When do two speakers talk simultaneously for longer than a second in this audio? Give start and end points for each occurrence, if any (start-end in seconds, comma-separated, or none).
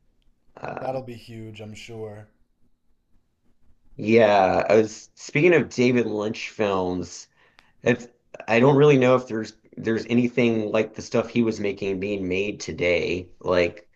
none